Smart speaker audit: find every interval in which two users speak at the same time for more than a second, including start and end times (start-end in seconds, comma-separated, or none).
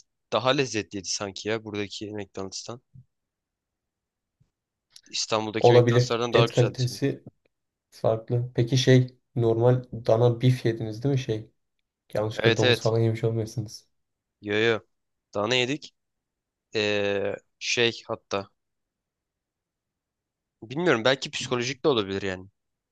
5.6-7.1